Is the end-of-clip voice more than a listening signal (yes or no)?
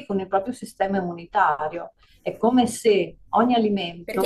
yes